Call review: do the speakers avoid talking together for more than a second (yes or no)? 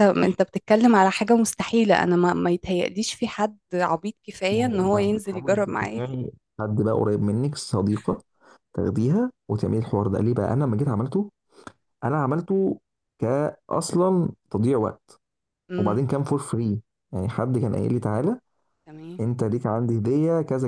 no